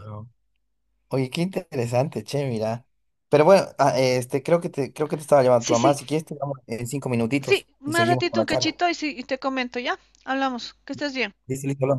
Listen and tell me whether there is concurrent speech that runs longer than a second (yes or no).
yes